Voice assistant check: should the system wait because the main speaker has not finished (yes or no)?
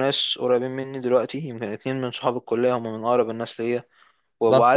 no